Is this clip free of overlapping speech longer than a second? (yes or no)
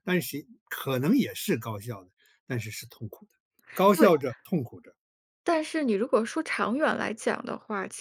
yes